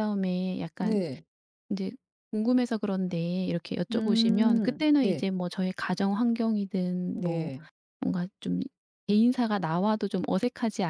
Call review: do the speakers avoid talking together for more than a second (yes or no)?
no